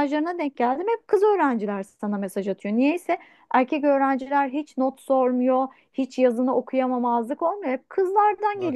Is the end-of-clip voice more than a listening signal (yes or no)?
yes